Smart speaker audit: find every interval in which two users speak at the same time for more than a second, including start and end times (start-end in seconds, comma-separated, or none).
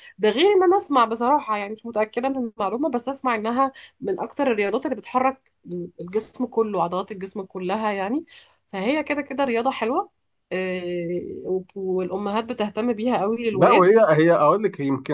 none